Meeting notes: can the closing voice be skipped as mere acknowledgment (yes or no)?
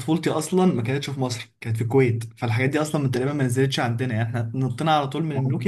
yes